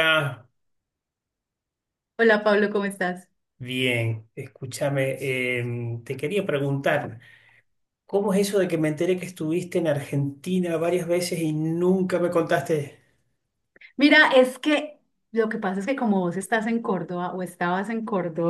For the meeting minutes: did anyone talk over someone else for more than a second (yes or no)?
no